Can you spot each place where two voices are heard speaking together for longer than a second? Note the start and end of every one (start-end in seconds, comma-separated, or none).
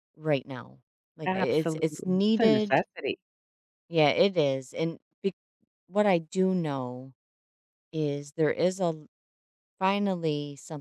1.2-2.8